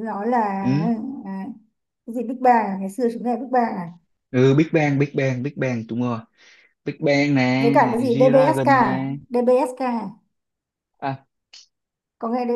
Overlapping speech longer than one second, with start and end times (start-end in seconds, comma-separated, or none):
7.6-9.2